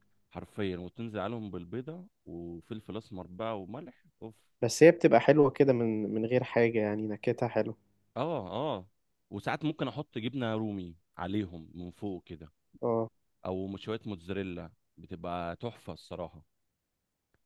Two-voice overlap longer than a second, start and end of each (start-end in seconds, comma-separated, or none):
none